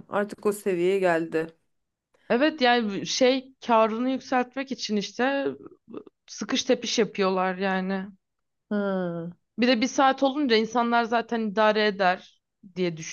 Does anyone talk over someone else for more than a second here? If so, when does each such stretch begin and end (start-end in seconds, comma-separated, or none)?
none